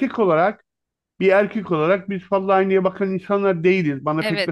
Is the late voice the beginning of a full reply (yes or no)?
no